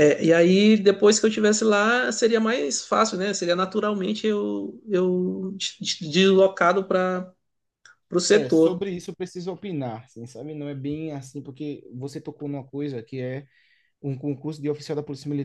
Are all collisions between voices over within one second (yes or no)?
yes